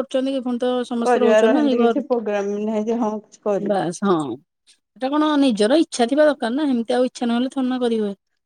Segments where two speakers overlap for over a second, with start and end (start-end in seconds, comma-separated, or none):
none